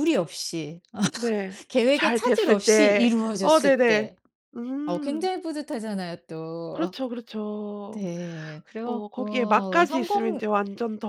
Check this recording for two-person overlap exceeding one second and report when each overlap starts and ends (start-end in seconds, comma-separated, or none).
1.7-4.1, 8.8-10.4